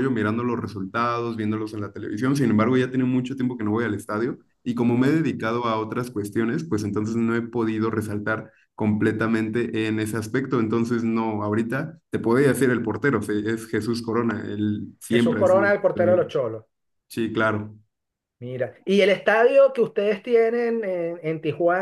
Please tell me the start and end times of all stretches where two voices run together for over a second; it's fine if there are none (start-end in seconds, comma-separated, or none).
15.1-16.3